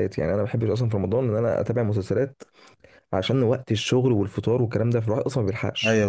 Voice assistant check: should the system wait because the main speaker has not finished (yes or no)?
no